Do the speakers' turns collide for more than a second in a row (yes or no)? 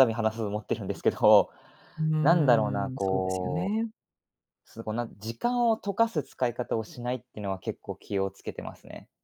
yes